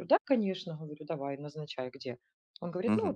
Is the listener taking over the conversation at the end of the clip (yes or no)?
yes